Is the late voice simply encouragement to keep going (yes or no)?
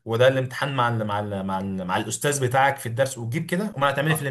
no